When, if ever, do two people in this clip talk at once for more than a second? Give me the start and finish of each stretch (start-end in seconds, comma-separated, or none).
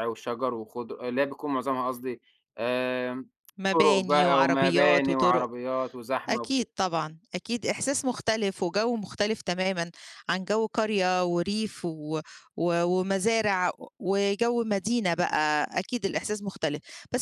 3.7-5.5